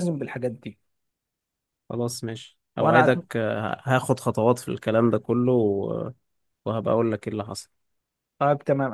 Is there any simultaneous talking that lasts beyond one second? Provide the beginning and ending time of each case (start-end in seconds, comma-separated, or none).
none